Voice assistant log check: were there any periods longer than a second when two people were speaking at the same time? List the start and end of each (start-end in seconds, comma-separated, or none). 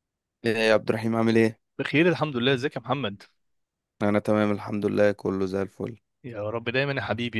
none